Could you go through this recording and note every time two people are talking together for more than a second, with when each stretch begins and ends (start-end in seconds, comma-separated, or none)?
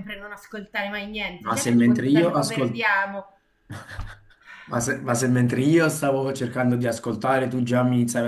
1.4-2.8